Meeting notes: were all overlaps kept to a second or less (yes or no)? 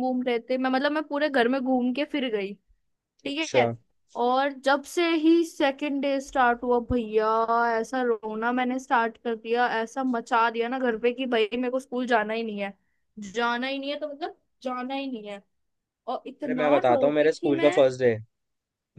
no